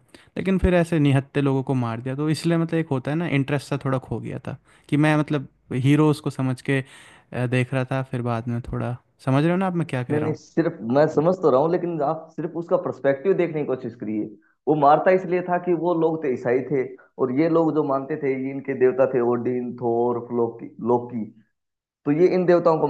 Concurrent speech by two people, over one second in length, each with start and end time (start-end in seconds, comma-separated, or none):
none